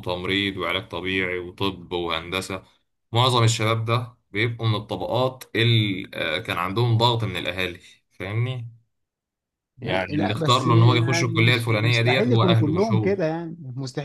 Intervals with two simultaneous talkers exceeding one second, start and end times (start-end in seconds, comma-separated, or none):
9.8-13.1